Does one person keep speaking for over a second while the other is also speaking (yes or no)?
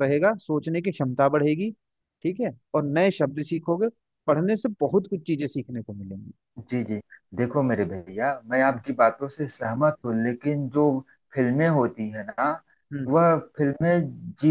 no